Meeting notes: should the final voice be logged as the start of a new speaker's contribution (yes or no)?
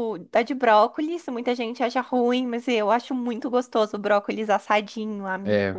yes